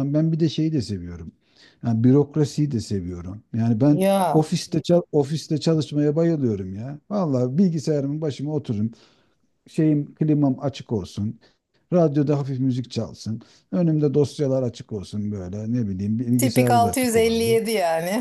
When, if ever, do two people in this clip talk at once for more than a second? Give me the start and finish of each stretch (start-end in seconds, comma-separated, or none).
16.4-17.6